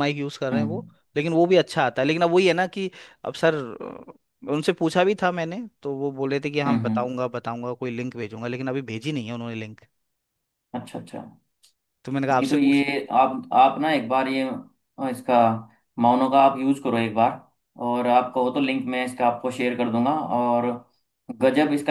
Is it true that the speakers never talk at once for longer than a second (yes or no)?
yes